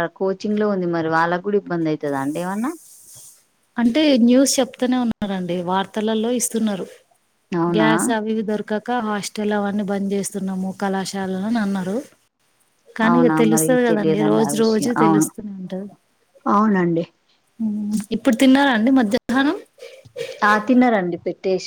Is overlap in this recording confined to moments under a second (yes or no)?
no